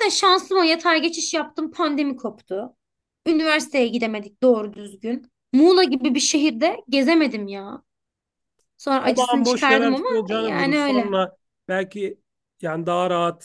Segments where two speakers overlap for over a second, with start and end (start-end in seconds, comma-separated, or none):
9.2-11.1